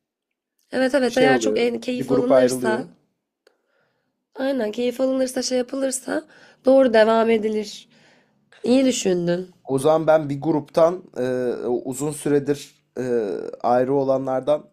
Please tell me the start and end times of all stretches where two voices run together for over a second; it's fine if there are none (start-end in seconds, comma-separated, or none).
1.1-2.9